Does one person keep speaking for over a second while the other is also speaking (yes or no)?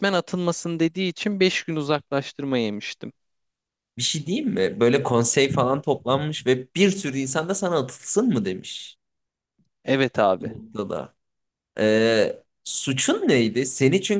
no